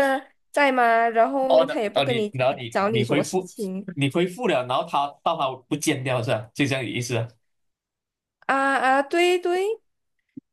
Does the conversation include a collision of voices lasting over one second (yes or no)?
yes